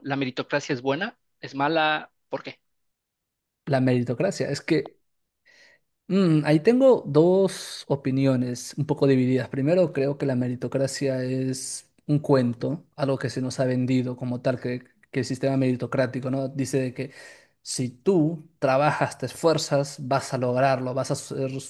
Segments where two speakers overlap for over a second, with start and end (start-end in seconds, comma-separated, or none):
none